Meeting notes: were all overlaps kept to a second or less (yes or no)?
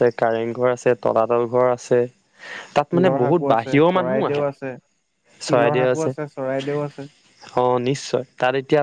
no